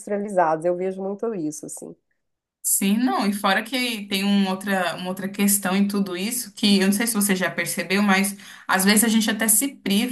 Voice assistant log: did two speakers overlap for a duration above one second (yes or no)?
no